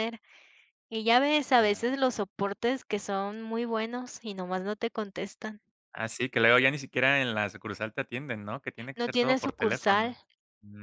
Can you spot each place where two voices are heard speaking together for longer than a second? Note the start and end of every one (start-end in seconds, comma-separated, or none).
8.9-10.2